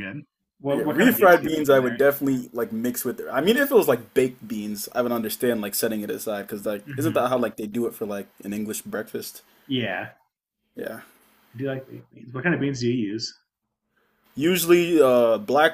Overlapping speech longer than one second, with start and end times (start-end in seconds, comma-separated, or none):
0.7-2.0